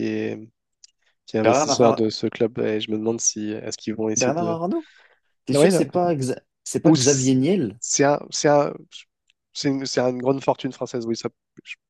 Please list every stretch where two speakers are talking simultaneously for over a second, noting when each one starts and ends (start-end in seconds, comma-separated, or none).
none